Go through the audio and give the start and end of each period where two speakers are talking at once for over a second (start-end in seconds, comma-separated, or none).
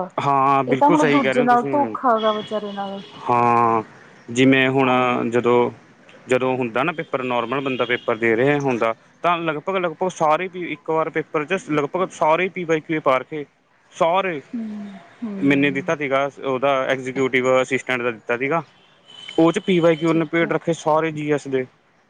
0.7-2.0